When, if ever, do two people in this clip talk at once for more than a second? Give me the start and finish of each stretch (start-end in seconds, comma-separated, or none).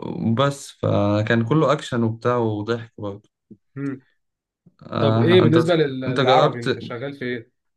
5.0-6.7